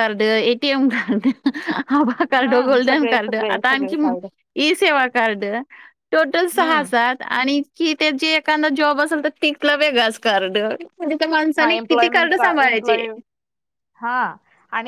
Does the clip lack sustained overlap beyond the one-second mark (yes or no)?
no